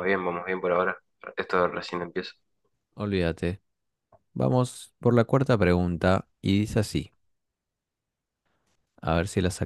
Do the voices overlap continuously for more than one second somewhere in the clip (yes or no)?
no